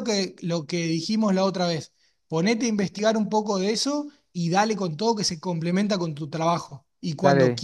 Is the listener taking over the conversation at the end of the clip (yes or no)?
no